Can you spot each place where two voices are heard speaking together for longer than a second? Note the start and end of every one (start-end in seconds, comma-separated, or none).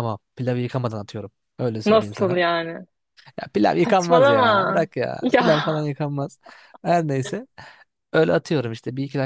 3.8-5.5